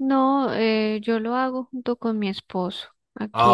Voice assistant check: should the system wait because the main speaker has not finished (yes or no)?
no